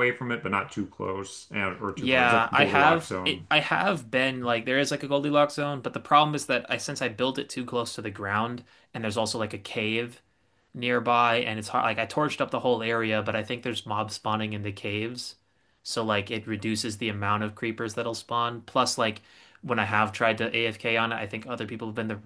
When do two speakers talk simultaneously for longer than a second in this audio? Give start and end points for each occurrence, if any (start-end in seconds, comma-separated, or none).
1.9-3.5